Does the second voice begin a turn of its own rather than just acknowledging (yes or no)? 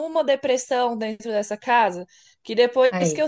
no